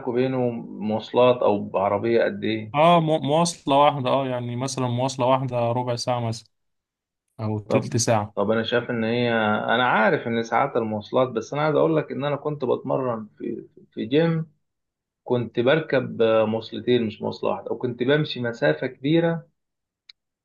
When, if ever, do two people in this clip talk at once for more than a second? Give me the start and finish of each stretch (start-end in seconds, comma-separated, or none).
none